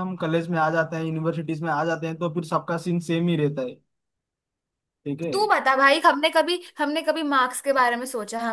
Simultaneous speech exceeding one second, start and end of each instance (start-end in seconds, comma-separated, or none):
none